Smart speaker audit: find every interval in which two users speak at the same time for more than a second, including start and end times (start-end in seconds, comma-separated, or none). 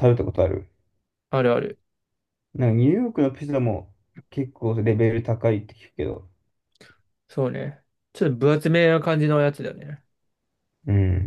none